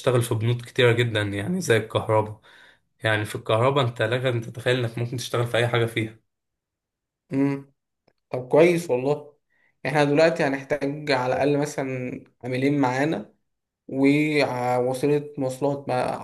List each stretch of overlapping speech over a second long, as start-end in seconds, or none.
none